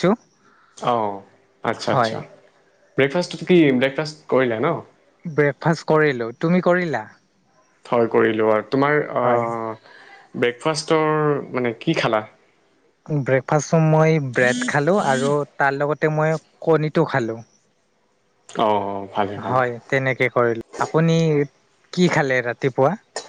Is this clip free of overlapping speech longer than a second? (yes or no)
yes